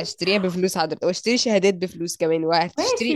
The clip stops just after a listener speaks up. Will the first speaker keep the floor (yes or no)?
no